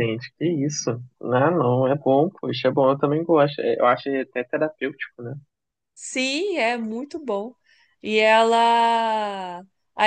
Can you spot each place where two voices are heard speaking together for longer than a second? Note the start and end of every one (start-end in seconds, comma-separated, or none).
none